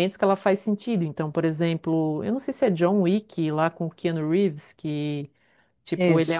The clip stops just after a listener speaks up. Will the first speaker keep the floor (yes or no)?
yes